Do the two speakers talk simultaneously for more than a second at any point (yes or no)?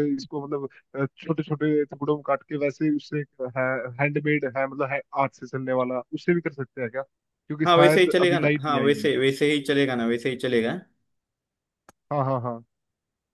yes